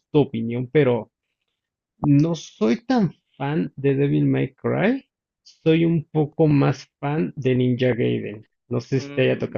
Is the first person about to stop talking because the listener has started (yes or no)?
yes